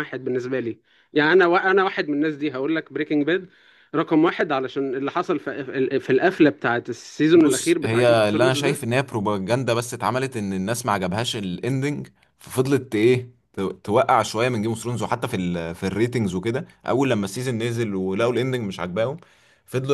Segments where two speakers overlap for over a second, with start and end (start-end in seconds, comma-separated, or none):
7.3-8.8